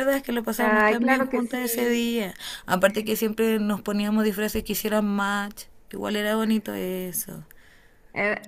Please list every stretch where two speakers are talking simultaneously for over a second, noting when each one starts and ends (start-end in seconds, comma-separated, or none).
0.6-2.1